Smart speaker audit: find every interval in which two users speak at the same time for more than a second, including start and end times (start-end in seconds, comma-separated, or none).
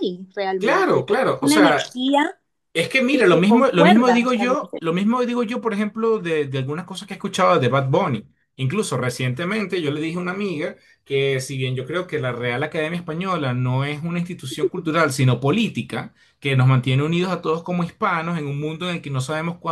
0.6-2.0, 3.1-4.8